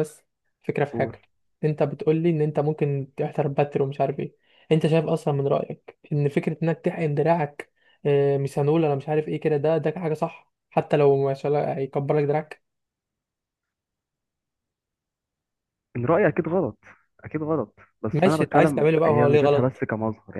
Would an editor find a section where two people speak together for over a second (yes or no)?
yes